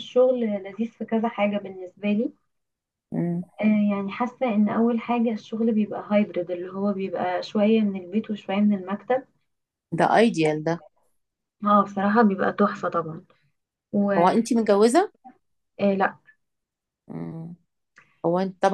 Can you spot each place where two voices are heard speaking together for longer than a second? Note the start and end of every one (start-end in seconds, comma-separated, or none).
none